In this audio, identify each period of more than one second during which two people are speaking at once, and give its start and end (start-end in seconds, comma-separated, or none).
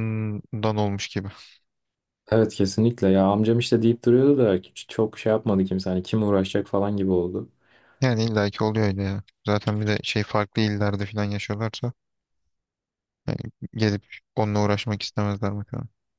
none